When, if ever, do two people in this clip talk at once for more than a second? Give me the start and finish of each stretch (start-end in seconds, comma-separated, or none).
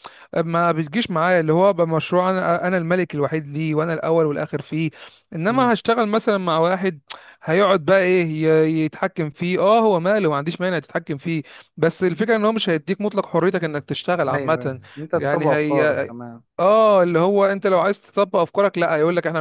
14.3-16.1